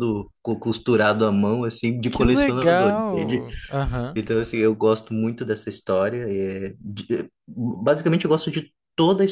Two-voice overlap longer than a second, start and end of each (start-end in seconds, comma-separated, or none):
2.1-3.5